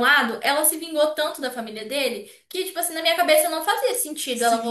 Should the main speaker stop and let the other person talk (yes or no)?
yes